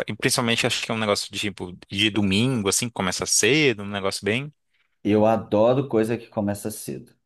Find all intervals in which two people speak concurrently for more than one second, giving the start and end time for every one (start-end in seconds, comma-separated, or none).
none